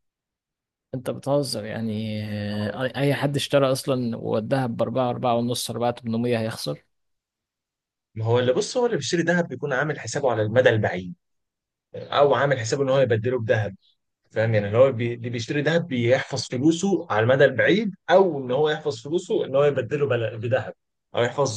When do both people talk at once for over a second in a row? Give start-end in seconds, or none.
none